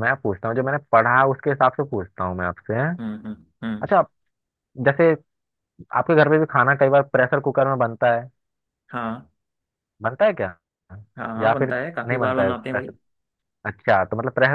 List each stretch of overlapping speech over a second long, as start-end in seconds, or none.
11.4-12.9